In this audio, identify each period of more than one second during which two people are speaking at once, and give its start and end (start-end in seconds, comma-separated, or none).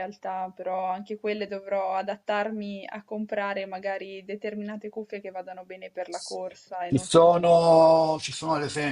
none